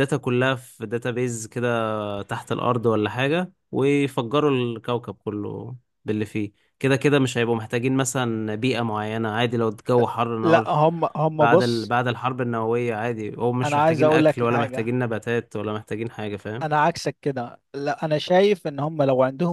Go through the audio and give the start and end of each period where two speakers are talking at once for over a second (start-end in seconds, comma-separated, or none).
13.6-14.9